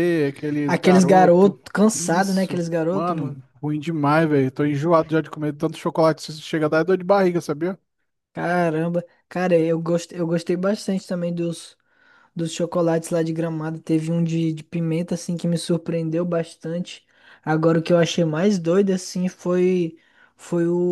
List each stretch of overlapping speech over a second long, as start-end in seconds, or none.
0.7-3.4